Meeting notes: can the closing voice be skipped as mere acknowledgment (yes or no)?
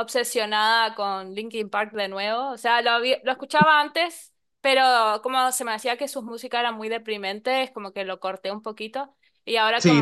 yes